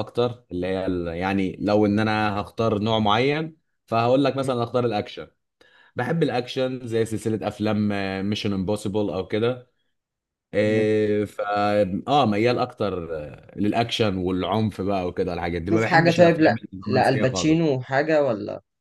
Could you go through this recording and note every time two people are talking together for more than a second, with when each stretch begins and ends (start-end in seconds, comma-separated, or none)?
15.7-17.8